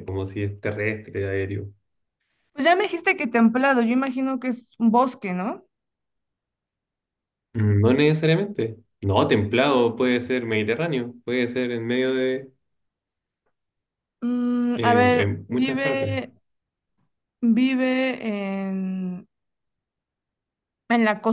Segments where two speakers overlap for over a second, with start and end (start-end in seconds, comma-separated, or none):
14.7-16.2